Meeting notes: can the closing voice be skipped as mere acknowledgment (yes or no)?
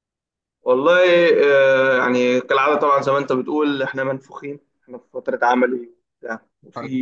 yes